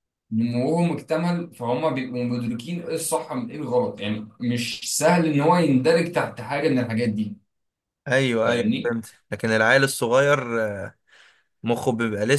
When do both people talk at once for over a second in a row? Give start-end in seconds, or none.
none